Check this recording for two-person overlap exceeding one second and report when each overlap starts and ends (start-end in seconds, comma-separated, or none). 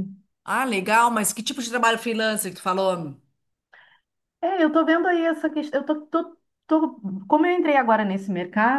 none